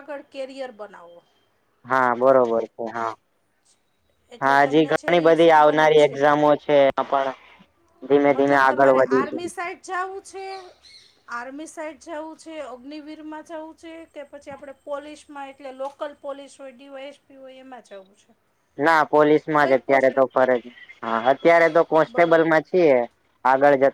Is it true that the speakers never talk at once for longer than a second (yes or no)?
no